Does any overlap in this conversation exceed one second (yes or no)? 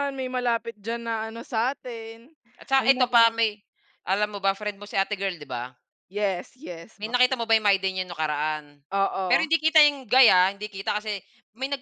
no